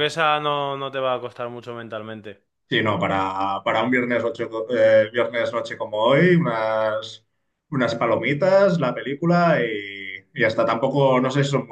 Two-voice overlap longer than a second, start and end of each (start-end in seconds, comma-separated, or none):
none